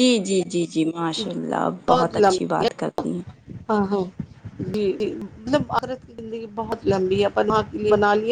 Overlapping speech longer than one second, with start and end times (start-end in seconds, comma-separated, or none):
none